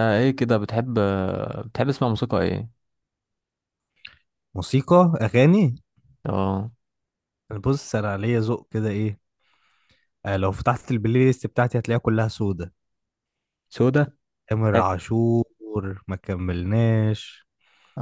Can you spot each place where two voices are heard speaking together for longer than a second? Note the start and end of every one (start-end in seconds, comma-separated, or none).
none